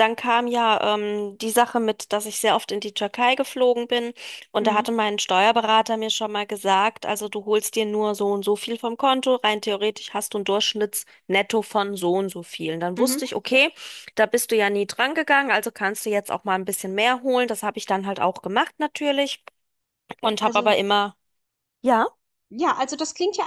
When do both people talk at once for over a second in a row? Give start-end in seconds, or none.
none